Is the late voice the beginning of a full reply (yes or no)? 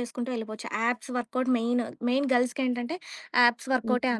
no